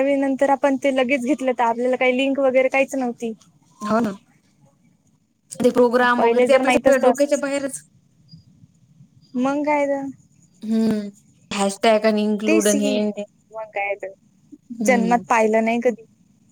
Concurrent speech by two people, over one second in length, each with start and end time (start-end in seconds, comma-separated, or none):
6.2-7.4